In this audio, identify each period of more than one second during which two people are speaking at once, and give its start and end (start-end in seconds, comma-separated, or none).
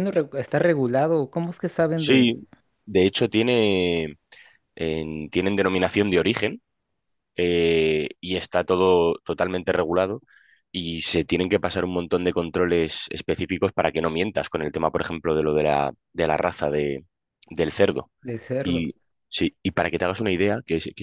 none